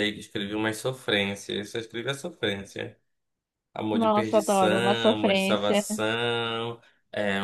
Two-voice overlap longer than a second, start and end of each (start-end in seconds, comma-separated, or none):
3.9-5.9